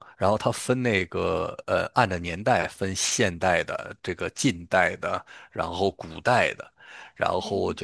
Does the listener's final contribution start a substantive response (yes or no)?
no